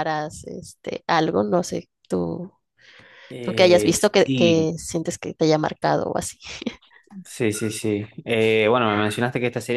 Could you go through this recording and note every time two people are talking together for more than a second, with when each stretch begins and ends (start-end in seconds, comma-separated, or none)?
3.4-4.7